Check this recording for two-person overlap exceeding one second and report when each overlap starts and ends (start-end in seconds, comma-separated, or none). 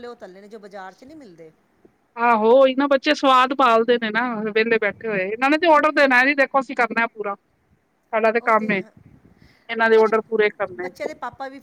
none